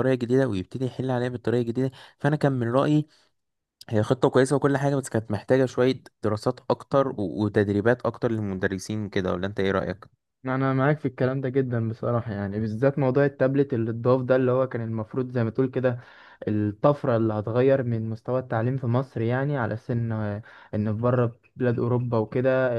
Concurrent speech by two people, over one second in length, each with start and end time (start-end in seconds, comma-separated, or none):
none